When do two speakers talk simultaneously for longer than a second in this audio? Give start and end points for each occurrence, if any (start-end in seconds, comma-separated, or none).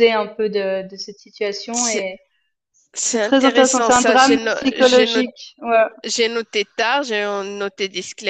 3.0-5.2